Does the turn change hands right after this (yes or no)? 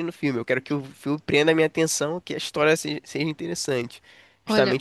no